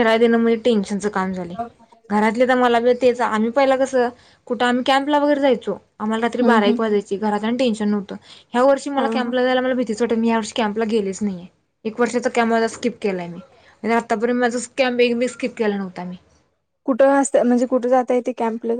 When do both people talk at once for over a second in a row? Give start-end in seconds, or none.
none